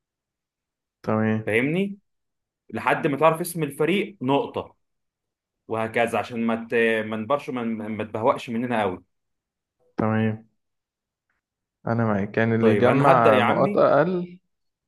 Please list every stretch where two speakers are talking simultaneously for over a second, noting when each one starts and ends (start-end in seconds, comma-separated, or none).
12.6-13.9